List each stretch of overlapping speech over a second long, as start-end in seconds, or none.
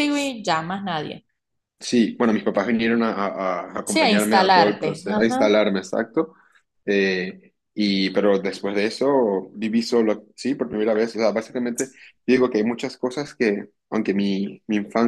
3.9-5.5